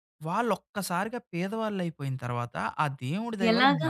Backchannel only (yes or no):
yes